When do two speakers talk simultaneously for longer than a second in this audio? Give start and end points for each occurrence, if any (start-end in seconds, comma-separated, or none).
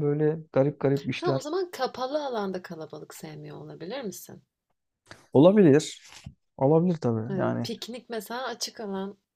none